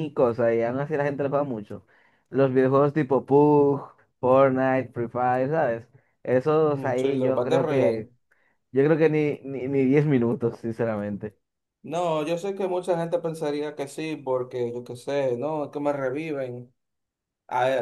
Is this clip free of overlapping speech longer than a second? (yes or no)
no